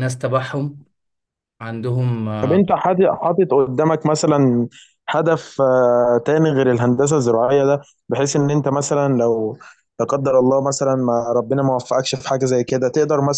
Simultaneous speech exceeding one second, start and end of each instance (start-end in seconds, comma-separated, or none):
none